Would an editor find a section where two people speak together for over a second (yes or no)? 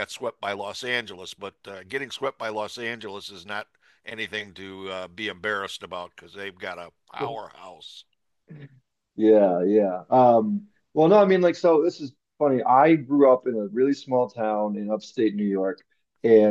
no